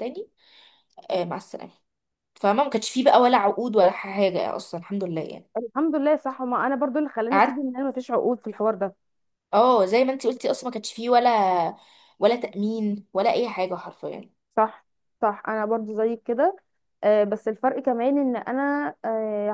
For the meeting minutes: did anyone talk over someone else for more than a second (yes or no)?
no